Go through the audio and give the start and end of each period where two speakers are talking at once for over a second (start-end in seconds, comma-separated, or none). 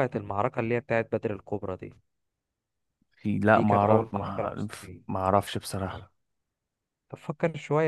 3.5-5.0